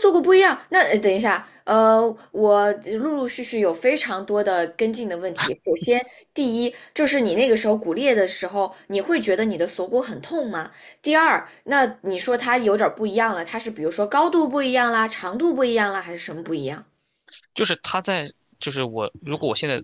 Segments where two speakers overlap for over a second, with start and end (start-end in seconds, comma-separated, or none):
none